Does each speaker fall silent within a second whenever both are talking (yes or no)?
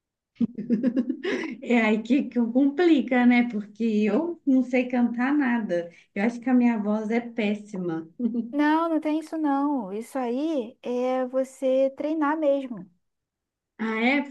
yes